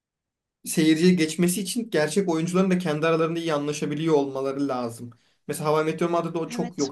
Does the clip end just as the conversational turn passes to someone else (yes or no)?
no